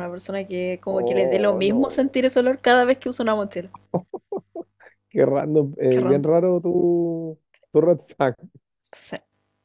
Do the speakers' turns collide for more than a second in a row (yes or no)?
yes